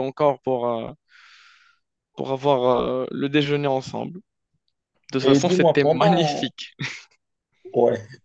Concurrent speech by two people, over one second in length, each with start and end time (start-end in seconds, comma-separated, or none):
5.2-6.5